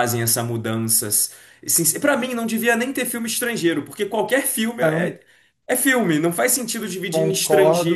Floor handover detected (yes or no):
yes